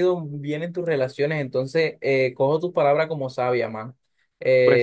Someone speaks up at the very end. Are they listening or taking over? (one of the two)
taking over